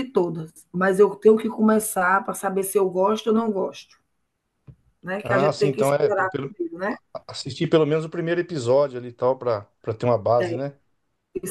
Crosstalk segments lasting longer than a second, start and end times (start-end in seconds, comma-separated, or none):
5.2-6.5